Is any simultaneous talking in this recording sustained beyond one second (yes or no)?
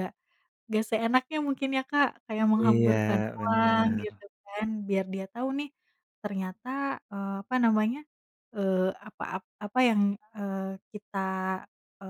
yes